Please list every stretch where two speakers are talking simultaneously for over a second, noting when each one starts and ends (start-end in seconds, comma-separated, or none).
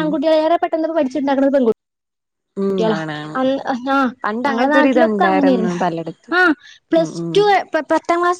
4.5-5.8